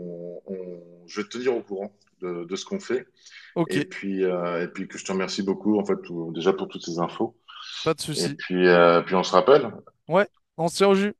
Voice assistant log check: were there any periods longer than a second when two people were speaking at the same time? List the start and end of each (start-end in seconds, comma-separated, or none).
none